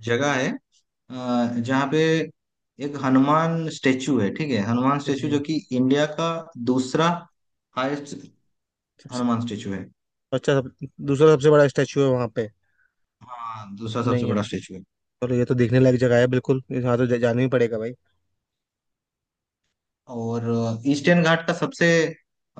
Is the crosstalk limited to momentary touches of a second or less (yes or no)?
yes